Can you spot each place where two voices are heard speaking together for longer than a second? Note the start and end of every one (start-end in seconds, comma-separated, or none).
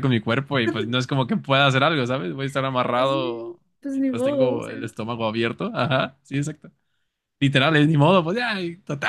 2.9-4.8